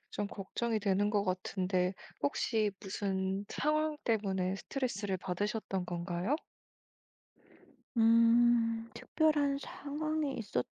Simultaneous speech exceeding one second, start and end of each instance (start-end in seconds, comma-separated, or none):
none